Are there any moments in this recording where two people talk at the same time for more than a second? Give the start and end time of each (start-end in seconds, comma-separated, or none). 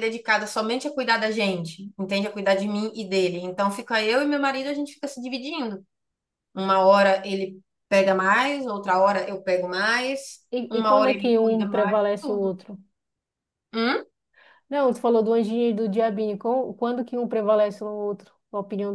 10.5-12.5